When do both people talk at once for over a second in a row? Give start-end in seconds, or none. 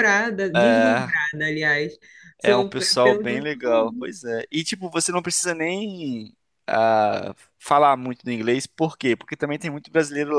2.4-4.1